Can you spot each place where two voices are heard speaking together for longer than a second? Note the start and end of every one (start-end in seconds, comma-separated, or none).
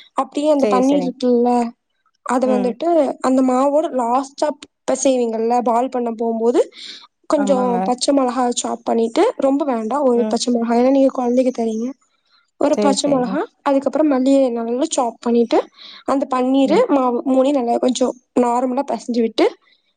none